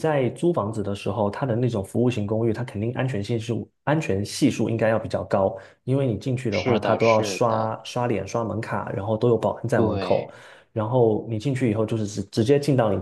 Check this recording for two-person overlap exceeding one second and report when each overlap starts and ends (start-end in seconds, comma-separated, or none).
6.5-7.8